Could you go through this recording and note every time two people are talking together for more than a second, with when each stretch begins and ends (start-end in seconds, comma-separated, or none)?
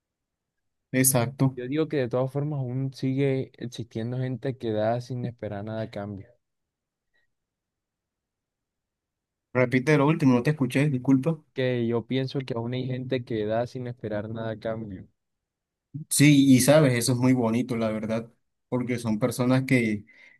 none